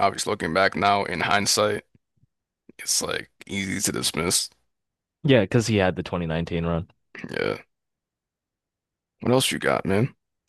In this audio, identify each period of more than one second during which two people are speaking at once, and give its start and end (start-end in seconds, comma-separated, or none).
none